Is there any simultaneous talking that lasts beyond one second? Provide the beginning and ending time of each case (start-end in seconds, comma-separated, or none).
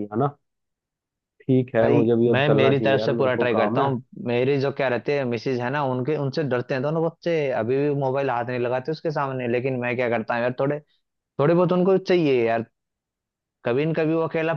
1.8-3.9